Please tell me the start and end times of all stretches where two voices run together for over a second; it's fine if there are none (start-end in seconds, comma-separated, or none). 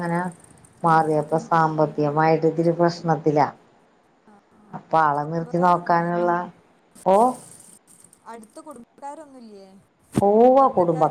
4.9-6.3